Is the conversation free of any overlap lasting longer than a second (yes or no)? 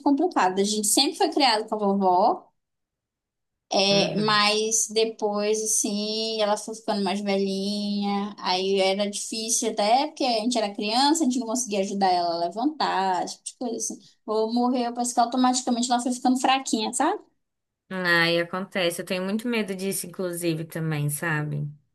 yes